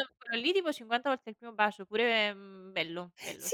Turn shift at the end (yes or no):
yes